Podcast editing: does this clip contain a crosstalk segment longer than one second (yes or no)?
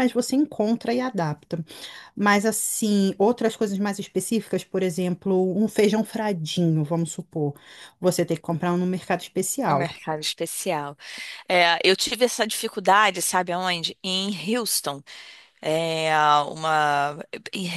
no